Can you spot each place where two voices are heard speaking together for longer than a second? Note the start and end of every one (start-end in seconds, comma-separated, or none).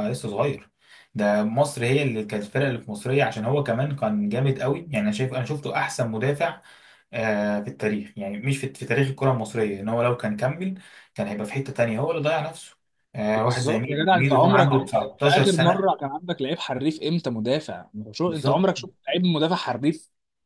13.3-15.9